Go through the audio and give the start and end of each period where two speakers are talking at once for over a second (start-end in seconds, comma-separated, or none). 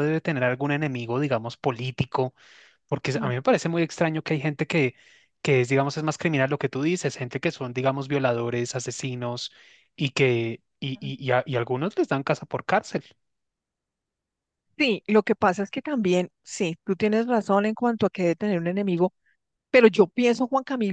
none